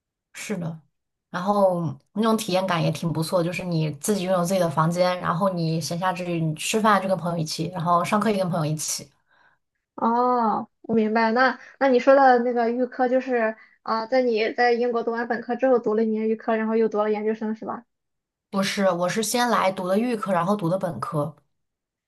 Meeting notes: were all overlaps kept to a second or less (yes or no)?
yes